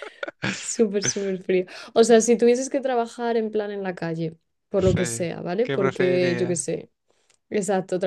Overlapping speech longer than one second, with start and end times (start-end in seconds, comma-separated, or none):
4.8-6.7